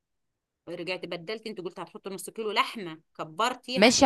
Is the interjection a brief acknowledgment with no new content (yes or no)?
no